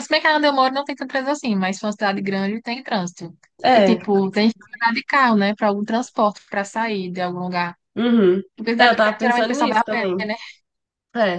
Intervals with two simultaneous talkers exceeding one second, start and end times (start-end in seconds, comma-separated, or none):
8.8-10.1